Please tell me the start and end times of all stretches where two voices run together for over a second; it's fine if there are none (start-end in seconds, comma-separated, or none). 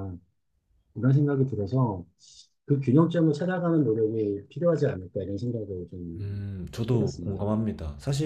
none